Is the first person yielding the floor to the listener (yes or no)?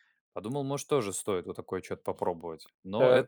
yes